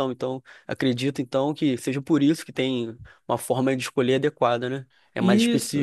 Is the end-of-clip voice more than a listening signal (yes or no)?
yes